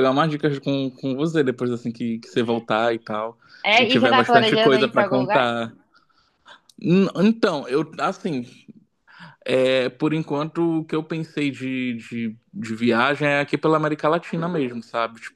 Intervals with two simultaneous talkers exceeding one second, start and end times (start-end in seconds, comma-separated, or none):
3.8-5.5